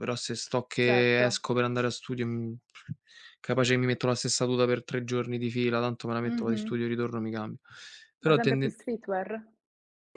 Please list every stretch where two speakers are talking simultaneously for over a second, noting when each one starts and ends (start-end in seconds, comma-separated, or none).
none